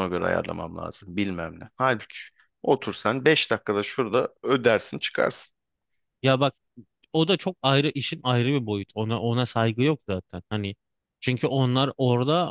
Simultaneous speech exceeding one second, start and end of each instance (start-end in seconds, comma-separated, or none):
none